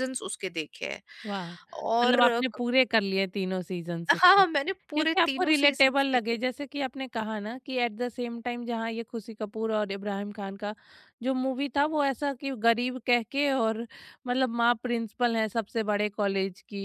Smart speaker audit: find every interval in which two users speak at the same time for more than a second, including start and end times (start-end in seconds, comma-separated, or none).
4.9-6.4